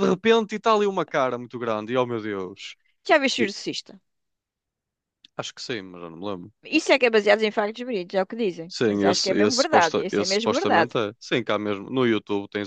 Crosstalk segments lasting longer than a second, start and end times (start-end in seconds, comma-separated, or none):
8.7-10.9